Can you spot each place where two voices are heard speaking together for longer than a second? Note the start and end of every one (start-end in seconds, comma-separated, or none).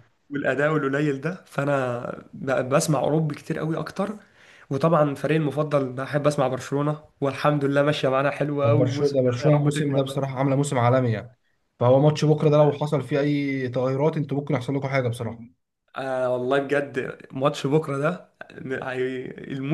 8.6-10.2